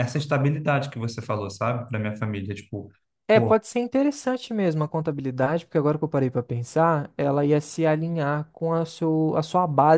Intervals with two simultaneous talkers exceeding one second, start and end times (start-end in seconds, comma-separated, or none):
none